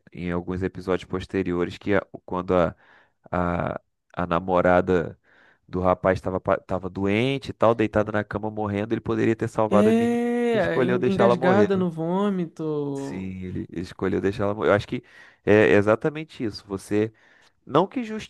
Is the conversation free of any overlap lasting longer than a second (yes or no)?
no